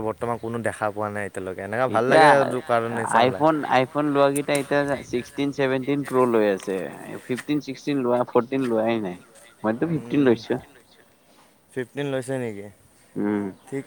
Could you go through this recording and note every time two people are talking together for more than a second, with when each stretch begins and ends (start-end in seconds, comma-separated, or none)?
none